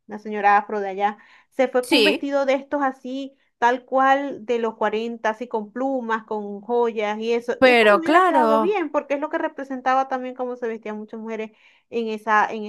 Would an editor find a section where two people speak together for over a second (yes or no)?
yes